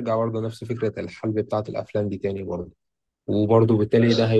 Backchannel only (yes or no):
yes